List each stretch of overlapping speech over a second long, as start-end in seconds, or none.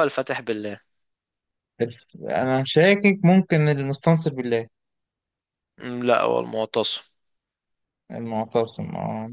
none